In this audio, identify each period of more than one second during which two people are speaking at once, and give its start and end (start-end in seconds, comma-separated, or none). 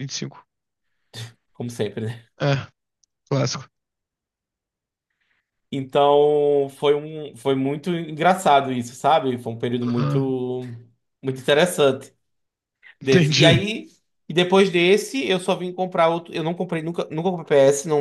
none